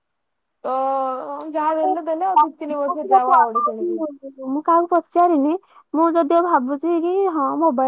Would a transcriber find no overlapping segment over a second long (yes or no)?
no